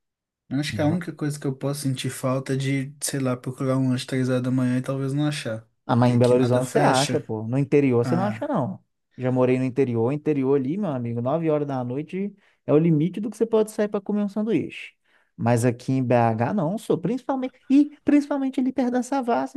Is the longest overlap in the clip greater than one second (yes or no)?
yes